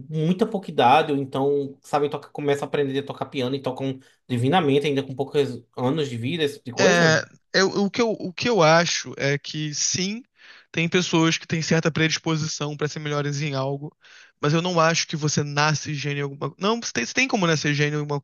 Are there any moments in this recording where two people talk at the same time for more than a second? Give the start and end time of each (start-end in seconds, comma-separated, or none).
none